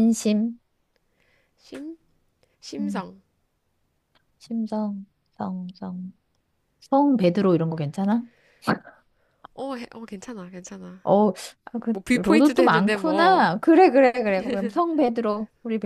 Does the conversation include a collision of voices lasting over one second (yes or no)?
yes